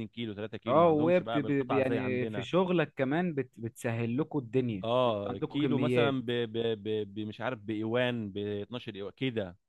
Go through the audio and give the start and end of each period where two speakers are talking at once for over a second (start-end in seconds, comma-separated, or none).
0.7-2.5, 4.8-6.2